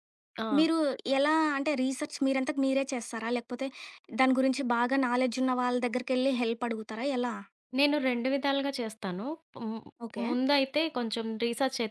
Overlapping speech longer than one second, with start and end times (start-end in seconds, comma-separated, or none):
none